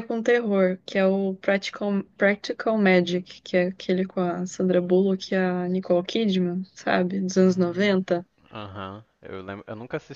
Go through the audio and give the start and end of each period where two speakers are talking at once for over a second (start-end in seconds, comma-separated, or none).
none